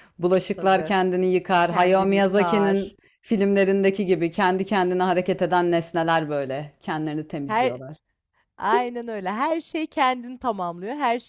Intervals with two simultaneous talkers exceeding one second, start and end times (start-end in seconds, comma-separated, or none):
1.7-3.0